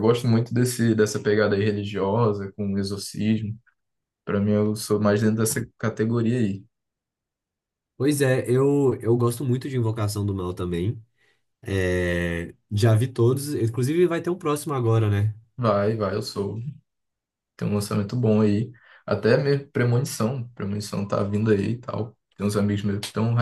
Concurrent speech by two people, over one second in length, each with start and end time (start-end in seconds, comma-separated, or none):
none